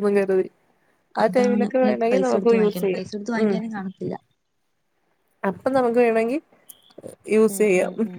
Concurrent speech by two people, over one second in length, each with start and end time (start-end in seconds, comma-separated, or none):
1.2-3.1